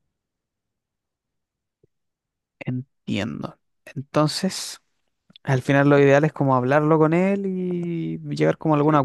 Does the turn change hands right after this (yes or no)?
yes